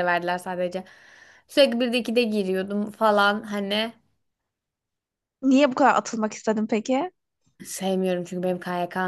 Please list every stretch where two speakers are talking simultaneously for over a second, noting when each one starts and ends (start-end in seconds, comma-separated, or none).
none